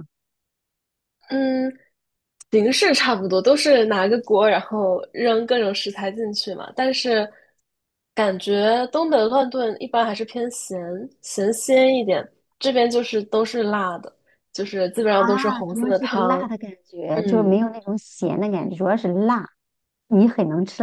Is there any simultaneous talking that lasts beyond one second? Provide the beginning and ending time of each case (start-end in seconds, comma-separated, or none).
15.1-16.5